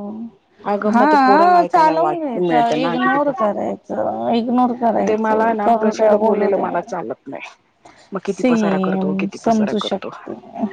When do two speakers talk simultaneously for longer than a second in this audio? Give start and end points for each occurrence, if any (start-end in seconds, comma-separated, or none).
0.9-3.6, 5.1-6.7, 8.4-10.1